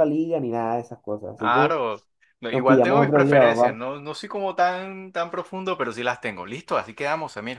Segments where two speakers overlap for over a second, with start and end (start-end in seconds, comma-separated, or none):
2.5-3.8